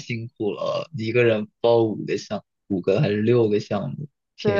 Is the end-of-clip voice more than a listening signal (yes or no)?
yes